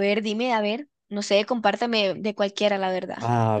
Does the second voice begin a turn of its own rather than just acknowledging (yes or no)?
yes